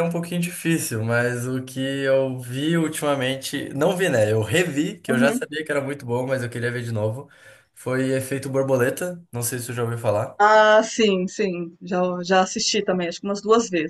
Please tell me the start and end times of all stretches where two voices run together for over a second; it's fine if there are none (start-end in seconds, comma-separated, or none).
none